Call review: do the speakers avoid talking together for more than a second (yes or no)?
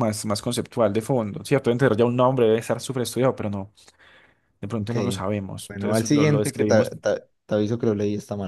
no